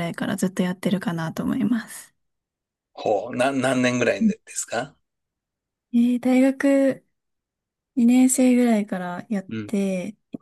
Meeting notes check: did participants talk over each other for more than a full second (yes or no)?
no